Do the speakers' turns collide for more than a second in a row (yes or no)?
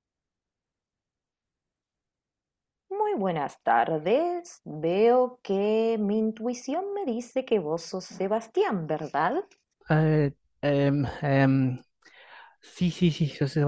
no